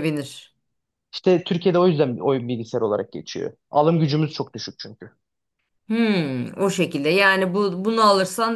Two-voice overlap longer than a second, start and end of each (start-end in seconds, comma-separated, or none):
none